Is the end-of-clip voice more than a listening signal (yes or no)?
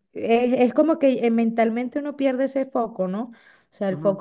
no